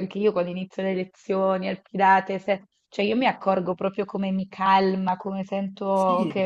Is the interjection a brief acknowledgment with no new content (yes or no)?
yes